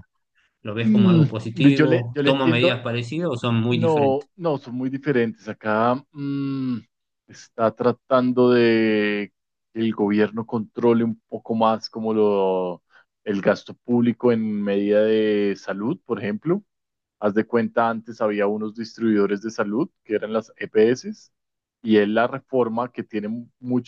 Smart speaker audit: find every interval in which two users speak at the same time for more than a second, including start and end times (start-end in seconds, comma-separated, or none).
0.8-2.8